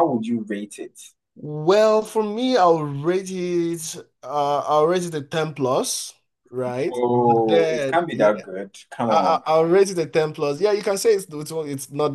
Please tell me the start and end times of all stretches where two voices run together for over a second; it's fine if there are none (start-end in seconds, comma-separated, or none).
6.9-8.4